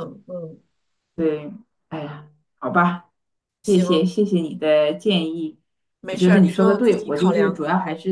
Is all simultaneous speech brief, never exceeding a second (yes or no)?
no